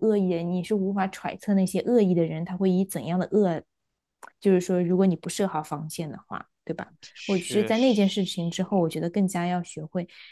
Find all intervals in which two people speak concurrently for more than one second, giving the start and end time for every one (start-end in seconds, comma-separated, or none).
7.1-8.9